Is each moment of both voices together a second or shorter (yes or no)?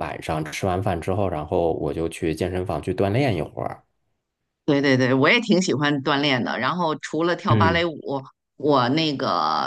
yes